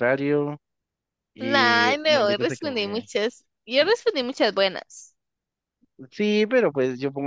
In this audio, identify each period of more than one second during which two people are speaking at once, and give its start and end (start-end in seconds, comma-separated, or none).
1.4-3.1